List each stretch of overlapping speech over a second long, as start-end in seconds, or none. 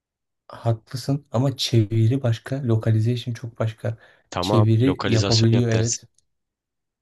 4.4-6.1